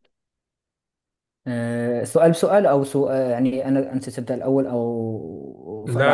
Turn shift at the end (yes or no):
yes